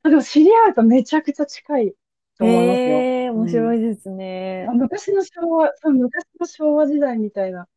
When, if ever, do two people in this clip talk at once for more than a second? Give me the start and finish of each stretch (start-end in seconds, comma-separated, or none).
2.4-3.8